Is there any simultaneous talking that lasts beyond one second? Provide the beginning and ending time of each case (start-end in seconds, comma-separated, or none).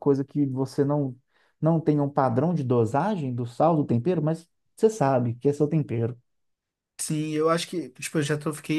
none